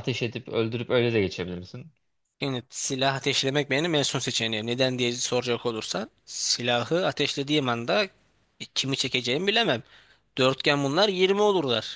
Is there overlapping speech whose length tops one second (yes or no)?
no